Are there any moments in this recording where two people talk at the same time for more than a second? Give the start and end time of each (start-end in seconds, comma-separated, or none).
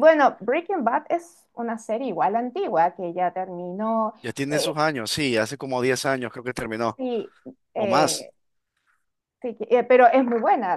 none